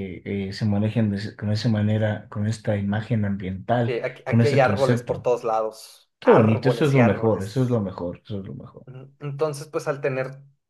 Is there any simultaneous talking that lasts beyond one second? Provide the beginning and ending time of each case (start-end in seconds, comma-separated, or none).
3.9-5.3, 6.2-7.8